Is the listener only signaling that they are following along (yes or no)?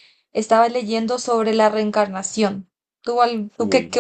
yes